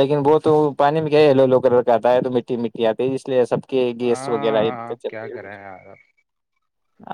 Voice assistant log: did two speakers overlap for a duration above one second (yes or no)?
yes